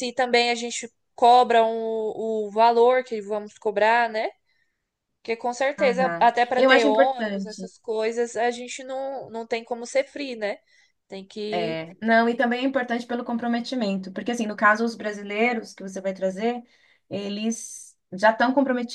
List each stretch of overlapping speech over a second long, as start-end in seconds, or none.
5.8-7.7